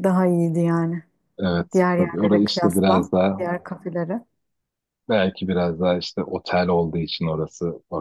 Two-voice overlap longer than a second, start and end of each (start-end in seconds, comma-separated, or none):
1.7-3.4